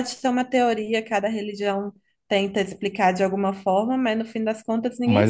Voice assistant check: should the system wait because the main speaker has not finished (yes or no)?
no